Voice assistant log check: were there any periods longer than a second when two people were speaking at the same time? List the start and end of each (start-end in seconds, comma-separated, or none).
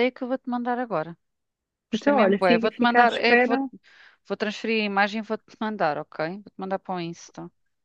1.9-3.6